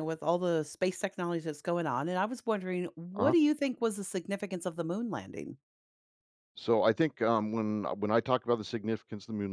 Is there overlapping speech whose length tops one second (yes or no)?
no